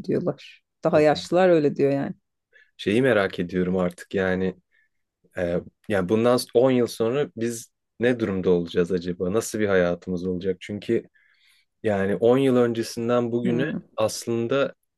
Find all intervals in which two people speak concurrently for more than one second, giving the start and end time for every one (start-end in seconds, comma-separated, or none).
none